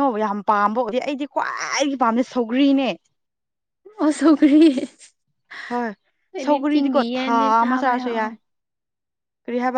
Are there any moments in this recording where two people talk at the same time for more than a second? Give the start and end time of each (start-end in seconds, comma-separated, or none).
6.4-8.2